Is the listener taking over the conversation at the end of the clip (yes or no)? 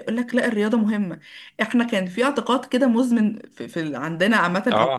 no